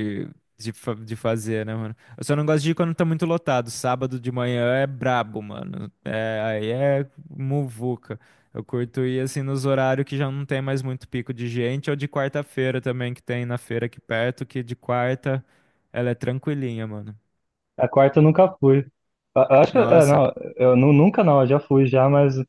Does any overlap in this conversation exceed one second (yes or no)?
no